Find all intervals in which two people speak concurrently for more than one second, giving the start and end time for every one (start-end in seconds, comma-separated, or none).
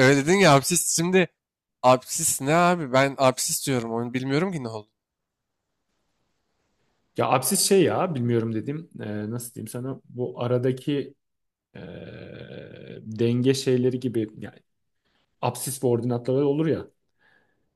none